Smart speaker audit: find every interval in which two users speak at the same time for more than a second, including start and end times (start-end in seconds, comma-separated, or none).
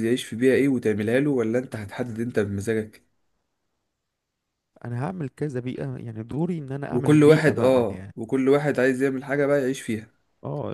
6.9-8.2